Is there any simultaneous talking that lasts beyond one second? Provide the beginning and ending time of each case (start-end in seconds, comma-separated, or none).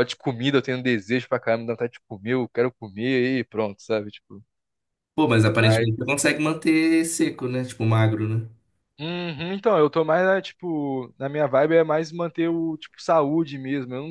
none